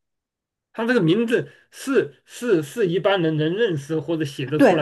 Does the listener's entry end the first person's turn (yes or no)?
yes